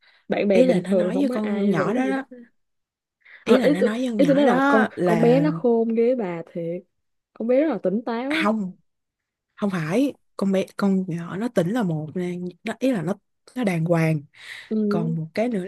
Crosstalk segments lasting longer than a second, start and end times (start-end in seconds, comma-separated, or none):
0.5-2.2, 3.4-5.5